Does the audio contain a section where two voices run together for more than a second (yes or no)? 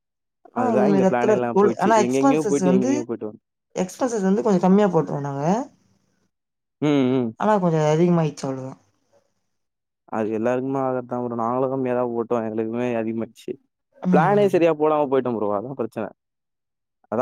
yes